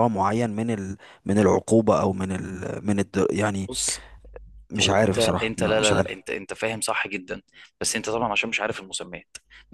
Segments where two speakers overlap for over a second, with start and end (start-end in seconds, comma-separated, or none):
4.8-6.2